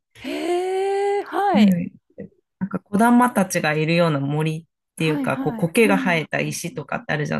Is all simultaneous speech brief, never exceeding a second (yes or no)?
no